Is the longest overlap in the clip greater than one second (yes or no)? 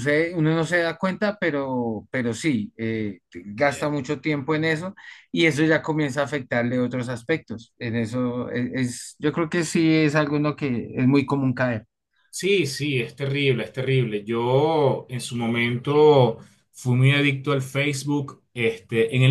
no